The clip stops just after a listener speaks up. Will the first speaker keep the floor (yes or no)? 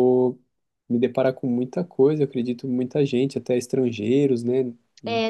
no